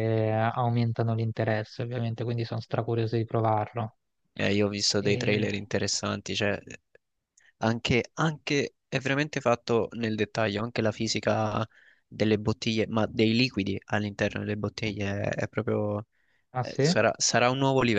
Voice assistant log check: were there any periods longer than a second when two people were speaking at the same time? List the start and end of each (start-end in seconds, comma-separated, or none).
none